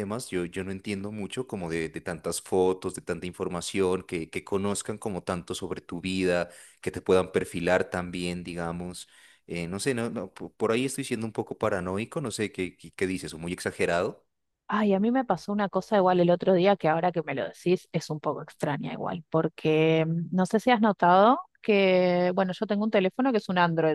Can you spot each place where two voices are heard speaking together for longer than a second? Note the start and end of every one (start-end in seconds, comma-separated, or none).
none